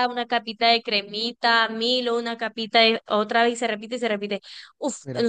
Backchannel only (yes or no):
yes